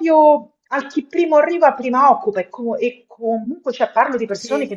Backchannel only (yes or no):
yes